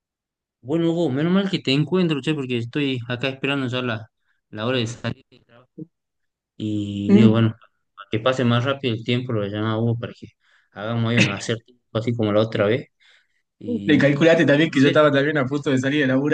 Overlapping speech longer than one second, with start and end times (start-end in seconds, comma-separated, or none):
none